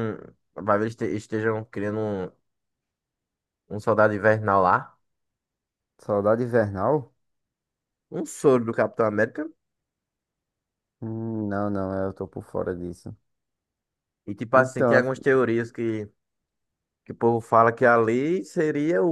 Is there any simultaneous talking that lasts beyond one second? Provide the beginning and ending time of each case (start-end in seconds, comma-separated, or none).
none